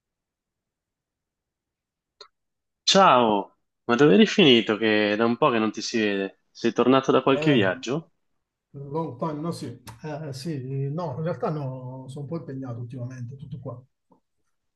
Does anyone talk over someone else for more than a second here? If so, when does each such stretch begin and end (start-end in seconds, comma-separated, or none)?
none